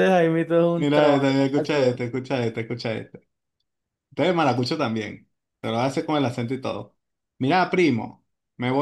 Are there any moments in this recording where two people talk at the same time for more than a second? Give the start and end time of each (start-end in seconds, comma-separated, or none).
0.8-2.0